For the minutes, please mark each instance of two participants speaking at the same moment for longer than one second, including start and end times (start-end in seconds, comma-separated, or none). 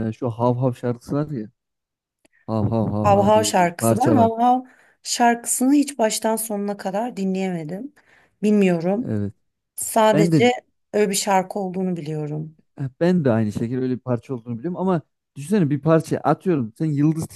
3.0-4.3